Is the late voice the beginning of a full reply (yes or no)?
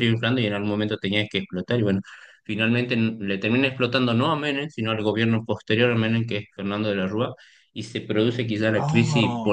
no